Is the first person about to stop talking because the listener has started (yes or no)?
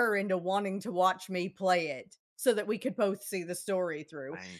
no